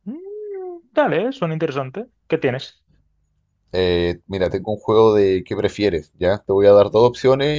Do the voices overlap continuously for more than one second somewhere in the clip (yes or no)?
no